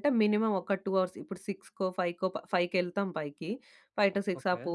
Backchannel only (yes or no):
yes